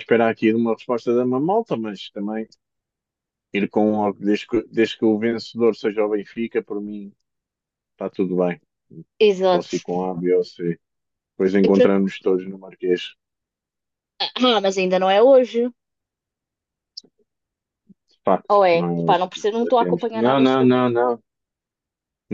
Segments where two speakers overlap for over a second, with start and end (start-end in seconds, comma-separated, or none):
18.5-20.9